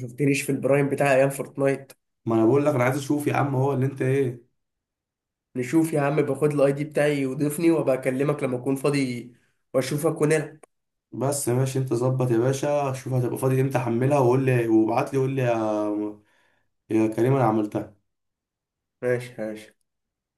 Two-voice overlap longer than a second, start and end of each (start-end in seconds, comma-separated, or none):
none